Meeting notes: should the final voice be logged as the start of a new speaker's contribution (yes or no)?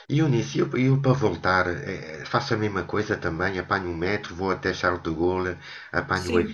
yes